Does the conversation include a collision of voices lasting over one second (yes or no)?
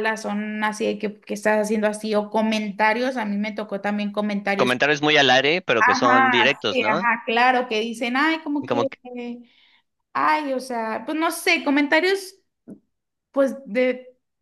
yes